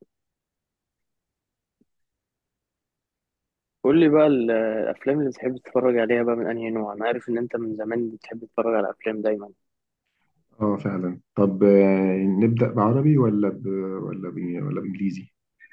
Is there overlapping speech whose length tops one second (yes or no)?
no